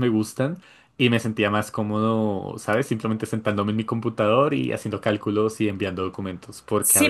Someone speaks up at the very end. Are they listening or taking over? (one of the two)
taking over